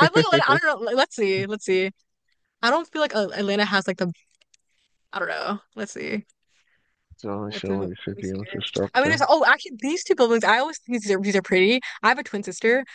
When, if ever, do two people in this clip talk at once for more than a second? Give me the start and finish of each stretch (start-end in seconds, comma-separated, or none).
7.5-9.2